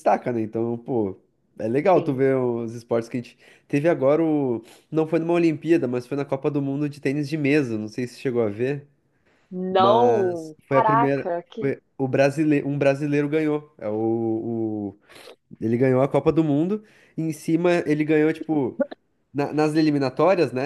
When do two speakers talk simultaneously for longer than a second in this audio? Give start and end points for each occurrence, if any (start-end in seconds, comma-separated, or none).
9.8-11.7